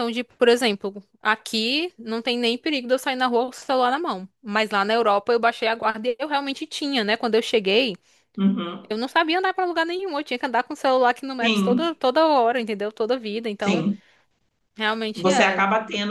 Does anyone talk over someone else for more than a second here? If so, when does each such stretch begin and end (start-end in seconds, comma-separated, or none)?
none